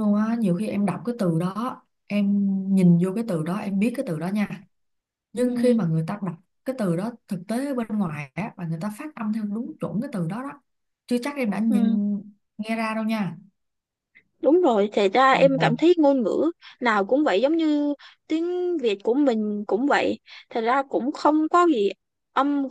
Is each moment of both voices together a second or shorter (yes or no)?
yes